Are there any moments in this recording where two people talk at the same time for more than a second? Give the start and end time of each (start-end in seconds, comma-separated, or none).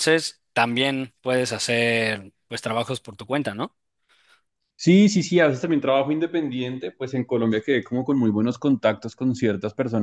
none